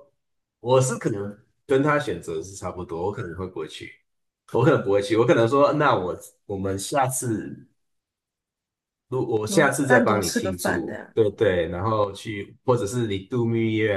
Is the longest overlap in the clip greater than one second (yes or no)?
yes